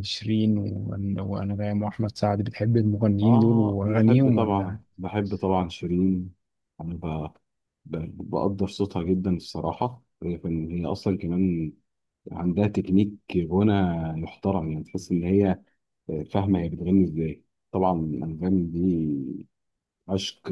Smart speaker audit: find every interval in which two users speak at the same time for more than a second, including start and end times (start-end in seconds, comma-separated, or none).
3.2-4.8